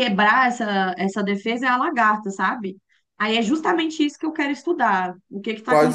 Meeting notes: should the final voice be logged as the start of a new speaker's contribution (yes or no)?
yes